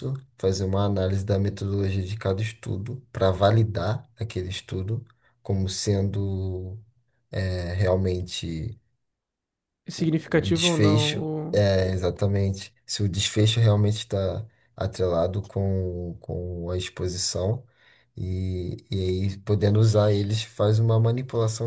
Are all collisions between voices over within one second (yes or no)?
no